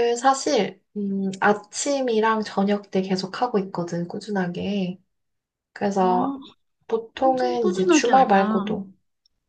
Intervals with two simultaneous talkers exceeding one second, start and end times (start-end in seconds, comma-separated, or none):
7.2-8.6